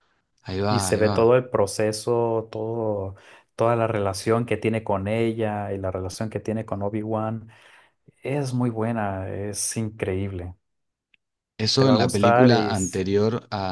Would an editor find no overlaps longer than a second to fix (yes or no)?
no